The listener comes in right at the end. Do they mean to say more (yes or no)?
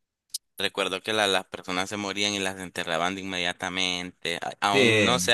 no